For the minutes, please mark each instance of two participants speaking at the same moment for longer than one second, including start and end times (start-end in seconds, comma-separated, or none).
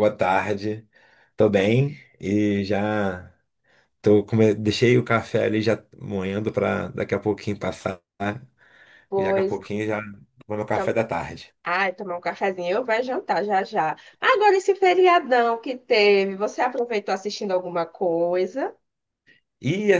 none